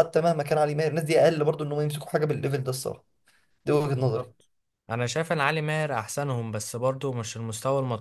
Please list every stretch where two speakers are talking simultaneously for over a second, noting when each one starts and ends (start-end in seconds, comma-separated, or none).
none